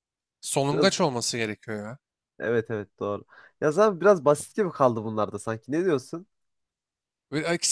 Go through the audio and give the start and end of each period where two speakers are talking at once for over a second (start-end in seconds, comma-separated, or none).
none